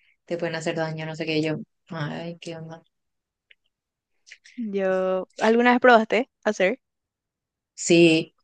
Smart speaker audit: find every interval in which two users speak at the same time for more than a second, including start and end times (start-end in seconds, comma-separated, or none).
none